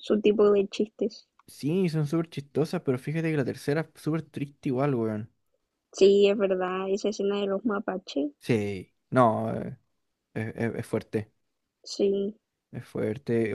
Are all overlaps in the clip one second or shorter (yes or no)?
yes